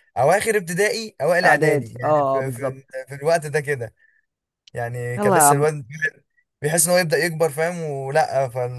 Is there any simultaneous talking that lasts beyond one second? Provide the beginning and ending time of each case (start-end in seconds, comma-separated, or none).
1.4-3.0